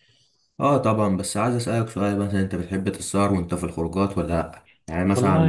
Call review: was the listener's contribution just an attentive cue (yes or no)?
yes